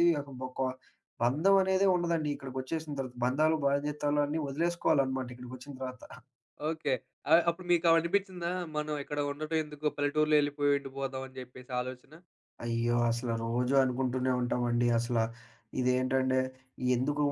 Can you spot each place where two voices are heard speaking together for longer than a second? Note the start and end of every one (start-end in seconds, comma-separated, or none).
none